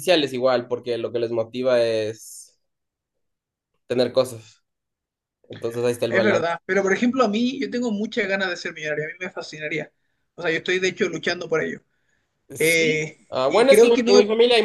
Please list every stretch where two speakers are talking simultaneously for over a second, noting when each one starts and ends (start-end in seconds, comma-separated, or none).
12.6-14.1